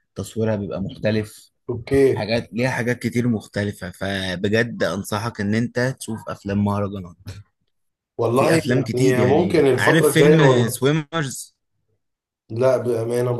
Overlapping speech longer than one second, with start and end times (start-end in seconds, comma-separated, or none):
8.3-10.8